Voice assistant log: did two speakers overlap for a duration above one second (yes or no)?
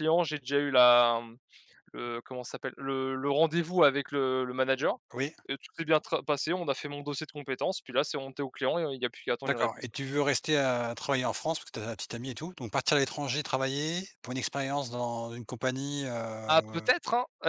no